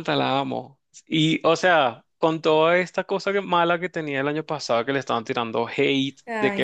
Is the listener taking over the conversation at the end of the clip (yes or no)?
no